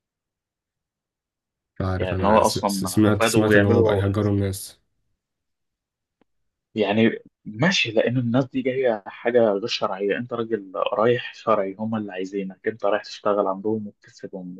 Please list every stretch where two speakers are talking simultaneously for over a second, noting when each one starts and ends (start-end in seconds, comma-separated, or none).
2.0-4.0